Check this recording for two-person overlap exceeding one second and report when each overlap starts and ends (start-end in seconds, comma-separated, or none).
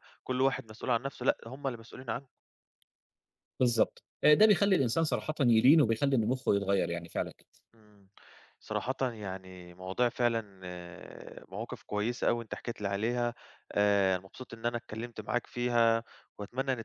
none